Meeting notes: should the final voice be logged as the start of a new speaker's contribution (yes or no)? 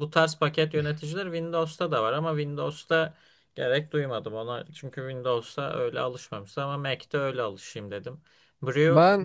no